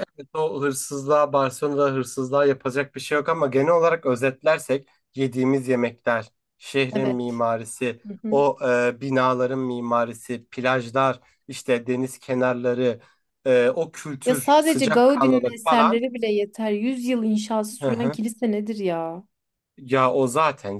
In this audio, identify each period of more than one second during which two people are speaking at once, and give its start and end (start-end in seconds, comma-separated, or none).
14.2-16.0